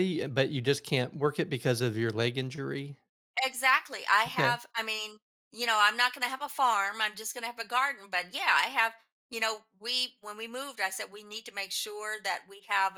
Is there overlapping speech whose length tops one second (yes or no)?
no